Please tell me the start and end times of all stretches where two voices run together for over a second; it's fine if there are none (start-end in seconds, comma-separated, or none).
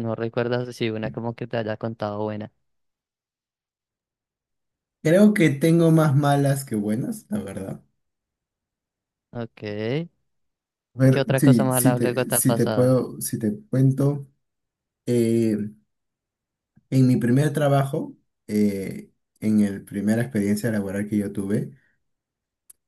11.1-13.0